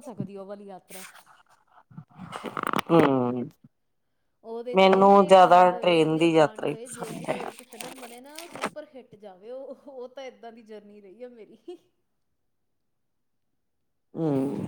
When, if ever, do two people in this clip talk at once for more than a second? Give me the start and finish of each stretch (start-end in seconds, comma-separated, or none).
4.8-7.4